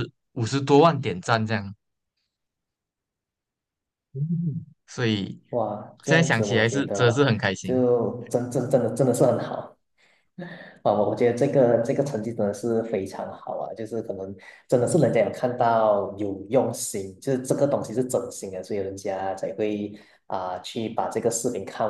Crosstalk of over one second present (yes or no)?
yes